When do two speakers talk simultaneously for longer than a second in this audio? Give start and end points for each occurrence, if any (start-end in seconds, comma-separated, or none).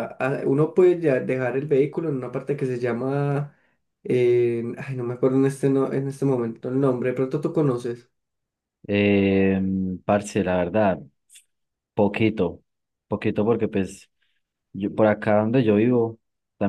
none